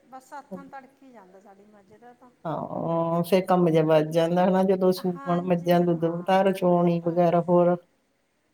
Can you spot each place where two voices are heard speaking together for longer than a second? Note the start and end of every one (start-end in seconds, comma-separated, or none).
5.1-7.3